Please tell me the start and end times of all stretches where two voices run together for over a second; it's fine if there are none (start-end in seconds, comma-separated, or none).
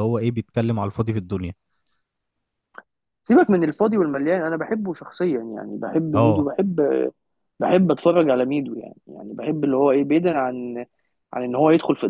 none